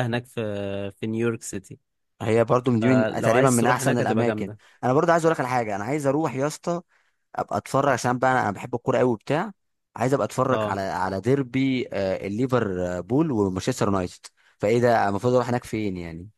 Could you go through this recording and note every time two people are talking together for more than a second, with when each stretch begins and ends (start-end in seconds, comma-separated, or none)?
2.8-4.6